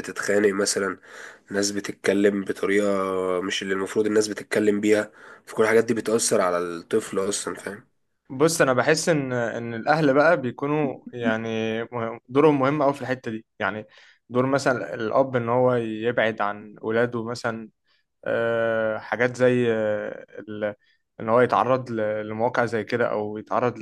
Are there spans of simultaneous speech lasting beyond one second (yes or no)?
no